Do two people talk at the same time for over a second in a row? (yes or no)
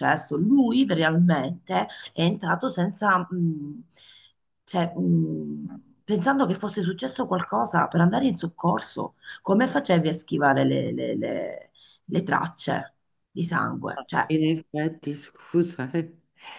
no